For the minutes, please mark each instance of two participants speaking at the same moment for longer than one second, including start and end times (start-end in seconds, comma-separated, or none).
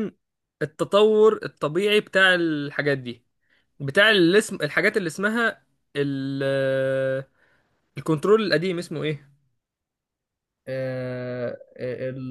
none